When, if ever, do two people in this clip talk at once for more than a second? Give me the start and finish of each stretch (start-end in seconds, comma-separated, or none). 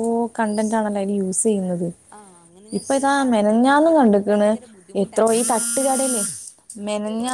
2.8-4.5